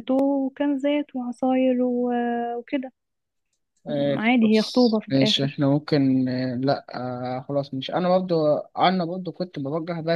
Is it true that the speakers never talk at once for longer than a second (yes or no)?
no